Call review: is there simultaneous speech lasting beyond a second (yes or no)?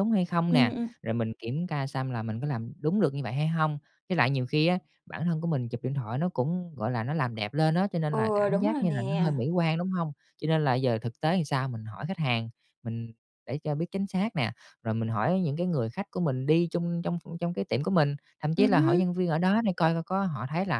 yes